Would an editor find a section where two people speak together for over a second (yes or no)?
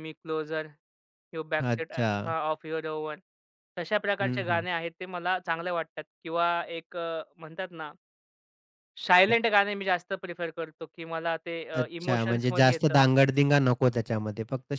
yes